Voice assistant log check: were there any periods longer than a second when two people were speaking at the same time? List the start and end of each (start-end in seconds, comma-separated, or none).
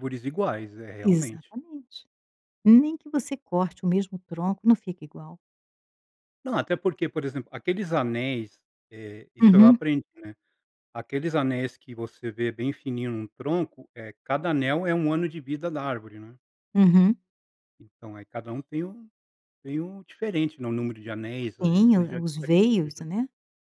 21.6-23.0